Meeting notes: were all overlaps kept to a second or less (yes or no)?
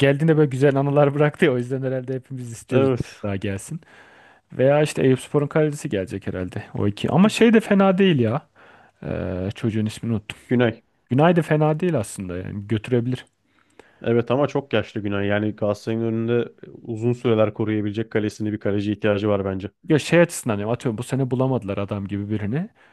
yes